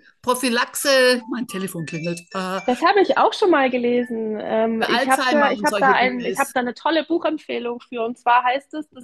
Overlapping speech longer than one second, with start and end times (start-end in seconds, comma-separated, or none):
4.8-6.5